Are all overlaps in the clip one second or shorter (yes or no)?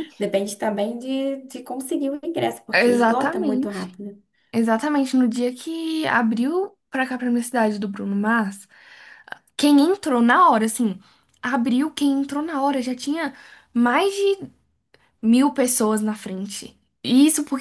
no